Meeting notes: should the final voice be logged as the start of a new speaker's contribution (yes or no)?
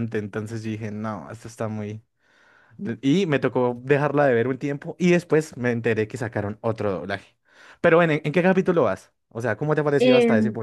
yes